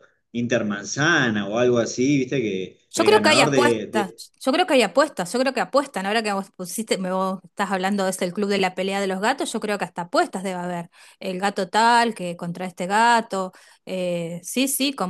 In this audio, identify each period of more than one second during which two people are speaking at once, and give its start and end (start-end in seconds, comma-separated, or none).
2.9-4.2